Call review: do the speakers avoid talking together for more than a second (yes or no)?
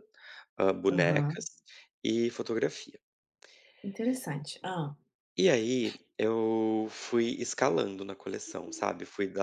yes